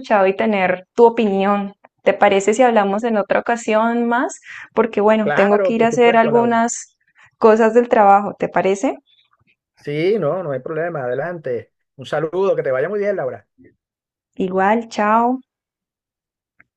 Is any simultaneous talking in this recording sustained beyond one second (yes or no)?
yes